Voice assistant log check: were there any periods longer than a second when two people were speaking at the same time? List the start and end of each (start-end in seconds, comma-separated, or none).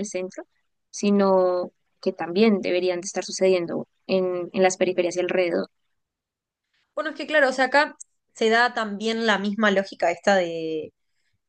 none